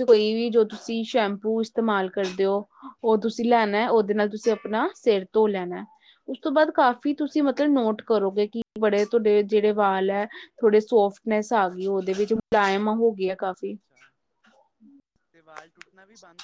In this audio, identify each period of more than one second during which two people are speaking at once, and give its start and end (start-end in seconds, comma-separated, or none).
none